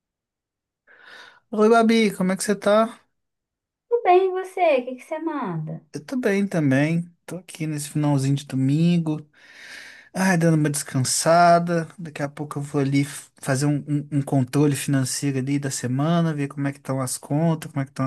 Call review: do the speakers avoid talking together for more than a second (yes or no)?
yes